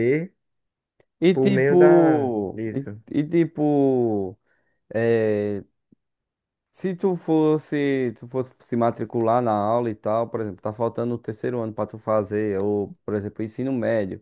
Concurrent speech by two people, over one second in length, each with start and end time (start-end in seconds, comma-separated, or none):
1.3-3.0